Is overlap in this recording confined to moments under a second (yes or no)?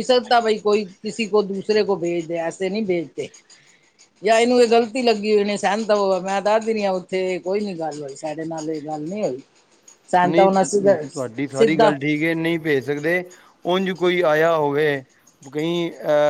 yes